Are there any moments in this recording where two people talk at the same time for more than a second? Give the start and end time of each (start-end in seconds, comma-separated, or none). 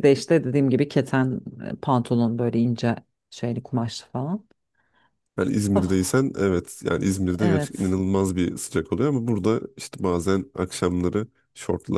none